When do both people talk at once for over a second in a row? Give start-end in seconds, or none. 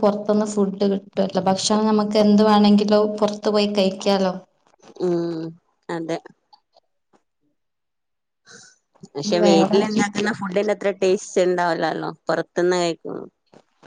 none